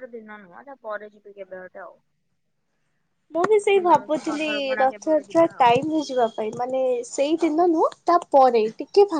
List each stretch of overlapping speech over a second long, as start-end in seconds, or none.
3.7-5.7